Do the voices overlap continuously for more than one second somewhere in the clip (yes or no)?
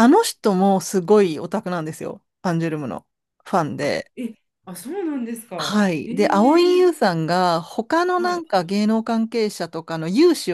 yes